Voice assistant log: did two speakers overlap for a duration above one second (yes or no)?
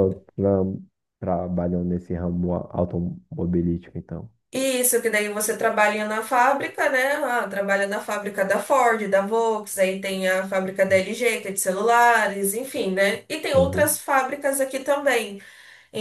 no